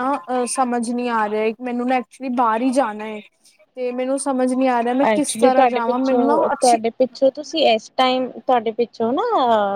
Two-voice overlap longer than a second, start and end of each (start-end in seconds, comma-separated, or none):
5.1-6.8